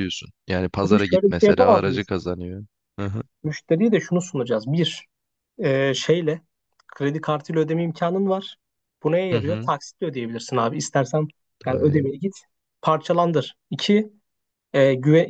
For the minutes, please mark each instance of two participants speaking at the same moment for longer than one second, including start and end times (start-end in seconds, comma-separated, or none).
0.8-2.1